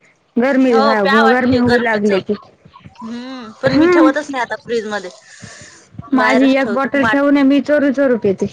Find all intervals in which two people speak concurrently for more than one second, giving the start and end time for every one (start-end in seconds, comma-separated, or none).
0.7-2.1